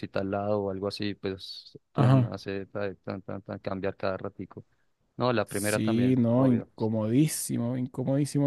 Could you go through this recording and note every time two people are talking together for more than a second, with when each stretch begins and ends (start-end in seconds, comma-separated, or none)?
5.5-6.7